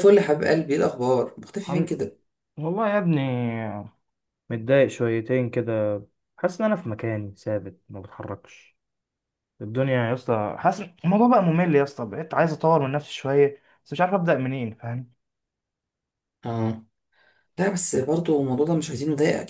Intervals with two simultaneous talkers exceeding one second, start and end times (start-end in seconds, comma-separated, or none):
none